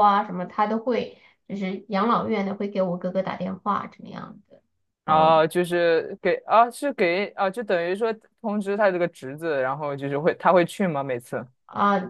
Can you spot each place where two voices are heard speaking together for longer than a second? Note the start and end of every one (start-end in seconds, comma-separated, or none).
none